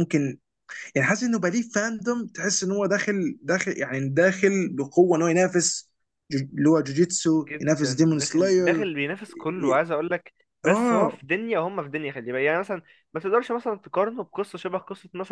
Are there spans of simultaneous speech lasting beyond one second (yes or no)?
yes